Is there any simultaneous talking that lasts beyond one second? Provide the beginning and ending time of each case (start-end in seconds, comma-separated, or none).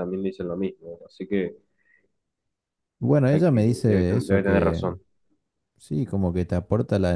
3.3-4.8